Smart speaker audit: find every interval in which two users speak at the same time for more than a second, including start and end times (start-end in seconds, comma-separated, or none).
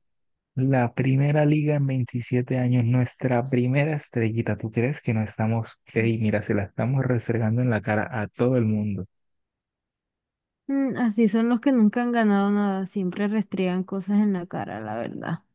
none